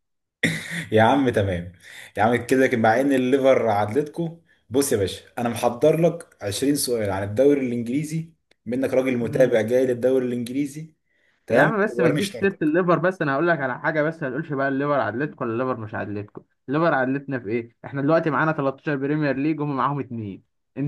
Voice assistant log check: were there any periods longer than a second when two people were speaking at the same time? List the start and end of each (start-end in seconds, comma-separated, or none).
11.5-12.7